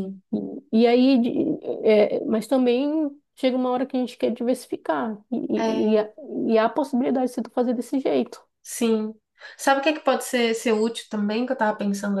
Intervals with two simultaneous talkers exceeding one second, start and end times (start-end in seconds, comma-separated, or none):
none